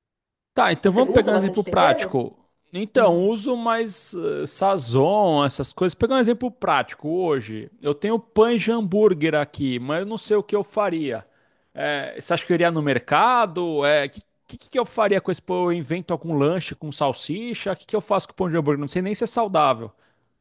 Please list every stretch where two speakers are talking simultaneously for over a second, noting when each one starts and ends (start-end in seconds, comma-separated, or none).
0.8-2.2